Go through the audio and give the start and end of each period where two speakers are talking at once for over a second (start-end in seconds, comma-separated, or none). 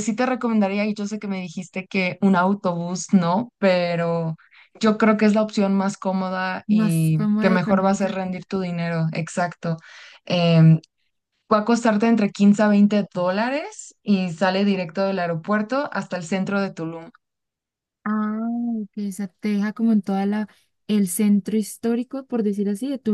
6.7-8.2